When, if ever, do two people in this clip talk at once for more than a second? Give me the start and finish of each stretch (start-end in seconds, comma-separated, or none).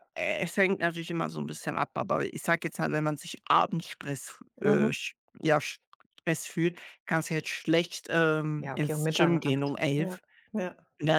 8.6-10.2